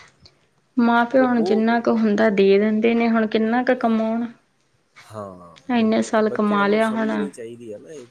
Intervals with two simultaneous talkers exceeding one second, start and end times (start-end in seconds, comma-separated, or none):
5.8-7.3